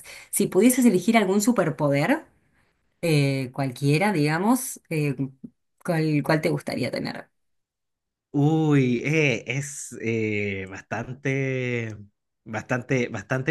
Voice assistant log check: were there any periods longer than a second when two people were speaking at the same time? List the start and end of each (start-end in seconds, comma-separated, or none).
none